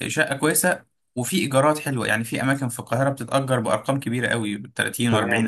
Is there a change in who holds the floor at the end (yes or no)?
yes